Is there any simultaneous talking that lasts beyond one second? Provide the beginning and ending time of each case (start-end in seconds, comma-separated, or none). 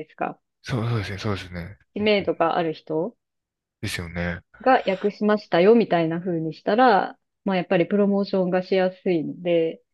none